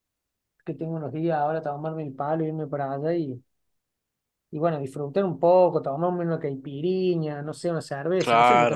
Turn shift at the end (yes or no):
yes